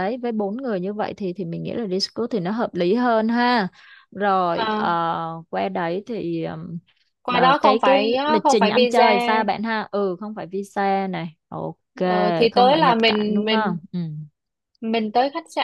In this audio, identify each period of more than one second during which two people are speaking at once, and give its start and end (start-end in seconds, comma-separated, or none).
7.3-9.1, 12.5-13.8